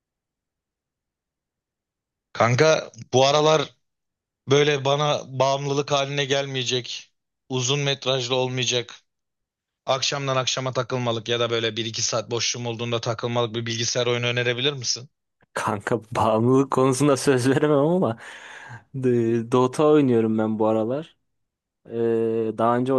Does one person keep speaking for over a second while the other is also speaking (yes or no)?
no